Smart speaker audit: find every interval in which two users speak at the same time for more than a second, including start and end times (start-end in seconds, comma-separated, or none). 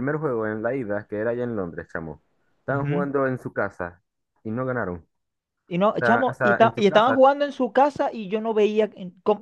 6.0-7.2